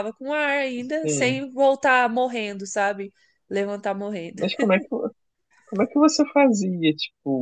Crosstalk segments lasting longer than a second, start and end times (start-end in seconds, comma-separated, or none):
none